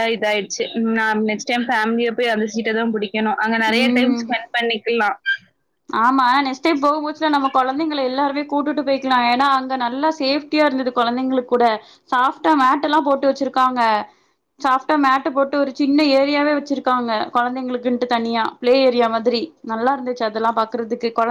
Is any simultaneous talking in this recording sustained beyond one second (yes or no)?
no